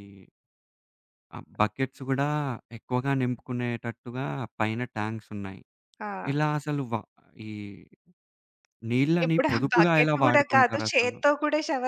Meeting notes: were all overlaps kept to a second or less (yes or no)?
no